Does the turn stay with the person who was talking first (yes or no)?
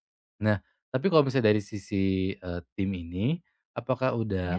yes